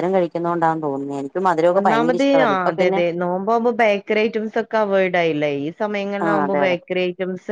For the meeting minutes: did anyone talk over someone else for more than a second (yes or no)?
no